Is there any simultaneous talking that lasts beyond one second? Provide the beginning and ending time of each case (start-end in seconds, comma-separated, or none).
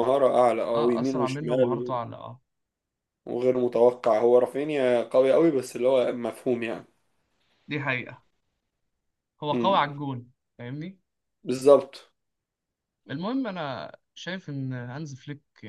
0.7-2.0